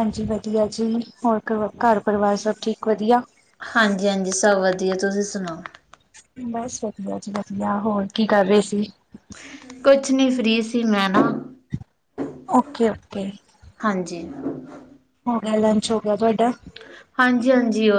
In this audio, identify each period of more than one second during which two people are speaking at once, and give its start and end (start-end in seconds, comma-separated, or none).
none